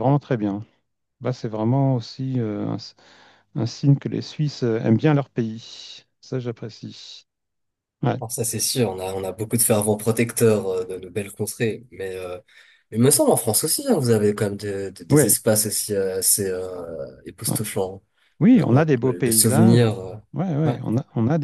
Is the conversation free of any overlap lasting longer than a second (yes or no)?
no